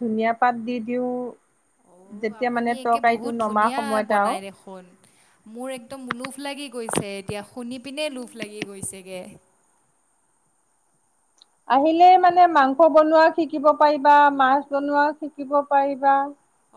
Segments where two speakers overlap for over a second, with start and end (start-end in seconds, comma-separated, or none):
2.4-4.3